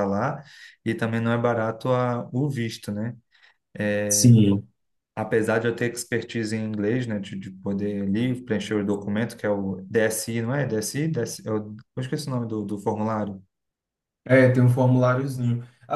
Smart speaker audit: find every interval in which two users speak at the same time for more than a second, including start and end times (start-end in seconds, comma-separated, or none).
none